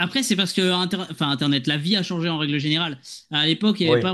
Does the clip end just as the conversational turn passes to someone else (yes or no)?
no